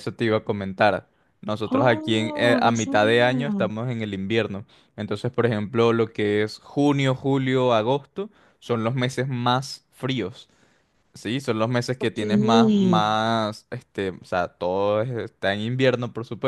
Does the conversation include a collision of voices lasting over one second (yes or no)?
yes